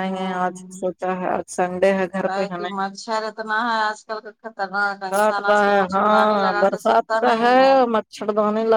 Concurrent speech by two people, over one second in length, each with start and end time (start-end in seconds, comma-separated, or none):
5.1-7.4